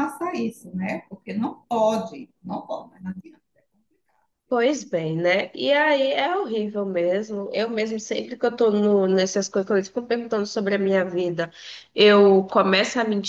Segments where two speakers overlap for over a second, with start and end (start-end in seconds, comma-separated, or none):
none